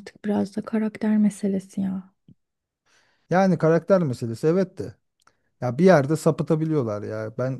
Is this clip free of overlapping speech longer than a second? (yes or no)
yes